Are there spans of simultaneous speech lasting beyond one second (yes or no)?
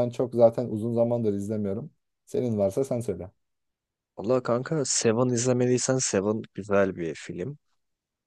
no